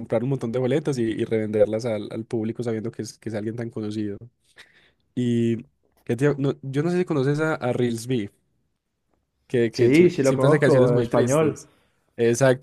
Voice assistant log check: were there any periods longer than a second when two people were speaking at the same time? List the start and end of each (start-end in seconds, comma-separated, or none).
9.7-11.6